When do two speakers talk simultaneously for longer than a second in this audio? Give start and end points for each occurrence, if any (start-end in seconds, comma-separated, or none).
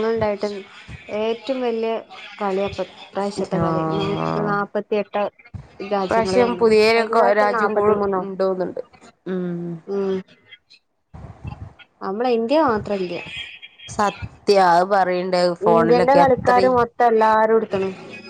6.0-7.9